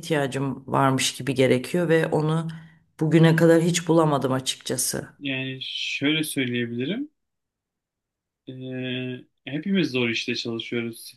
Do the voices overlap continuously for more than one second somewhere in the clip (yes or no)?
no